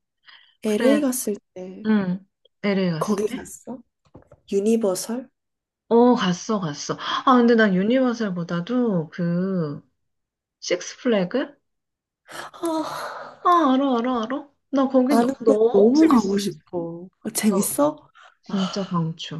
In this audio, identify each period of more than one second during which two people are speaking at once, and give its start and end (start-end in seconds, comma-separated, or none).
15.1-16.5